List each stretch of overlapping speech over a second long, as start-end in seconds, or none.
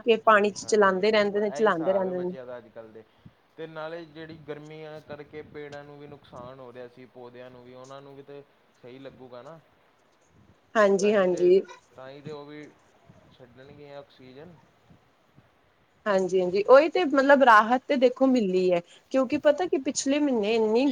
0.6-2.3